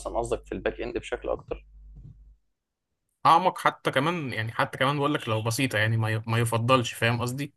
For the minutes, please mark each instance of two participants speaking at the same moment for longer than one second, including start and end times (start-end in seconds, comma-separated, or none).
none